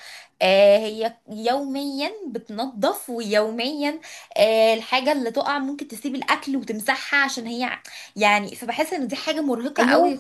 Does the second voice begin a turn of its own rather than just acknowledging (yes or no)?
yes